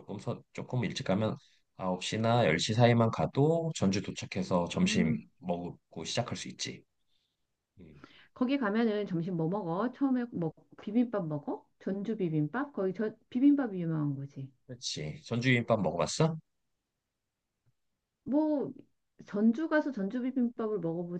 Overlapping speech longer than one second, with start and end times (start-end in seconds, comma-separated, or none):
none